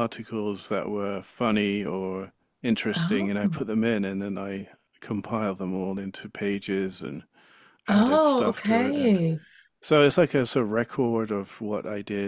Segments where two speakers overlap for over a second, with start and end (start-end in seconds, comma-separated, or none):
7.9-9.2